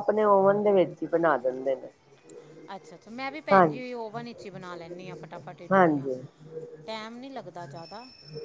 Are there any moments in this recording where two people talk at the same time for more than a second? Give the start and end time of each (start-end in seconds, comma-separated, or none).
none